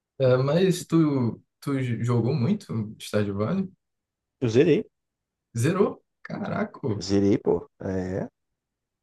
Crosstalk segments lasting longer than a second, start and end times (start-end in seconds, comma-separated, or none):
none